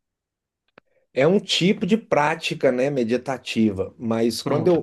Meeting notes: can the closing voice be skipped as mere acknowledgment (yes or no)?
yes